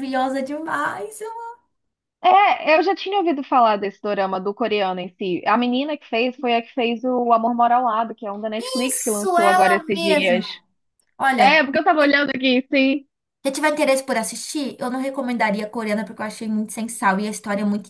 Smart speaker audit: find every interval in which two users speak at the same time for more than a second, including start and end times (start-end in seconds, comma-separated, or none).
8.9-10.4